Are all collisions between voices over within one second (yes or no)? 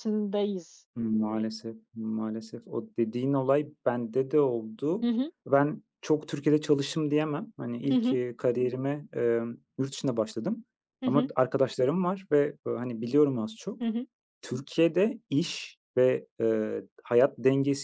yes